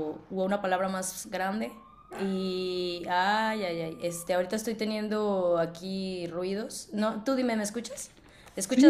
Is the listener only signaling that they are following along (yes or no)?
no